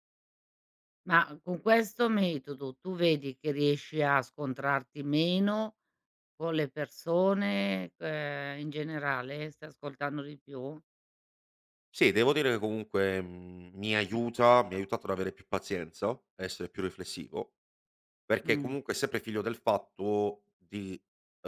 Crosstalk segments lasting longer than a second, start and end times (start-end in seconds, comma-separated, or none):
none